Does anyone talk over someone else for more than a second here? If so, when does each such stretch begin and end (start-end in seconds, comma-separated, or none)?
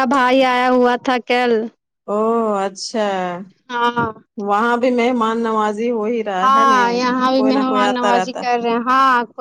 none